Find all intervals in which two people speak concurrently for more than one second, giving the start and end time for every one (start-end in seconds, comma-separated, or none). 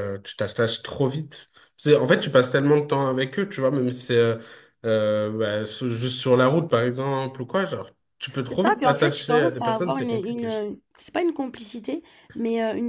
8.4-10.5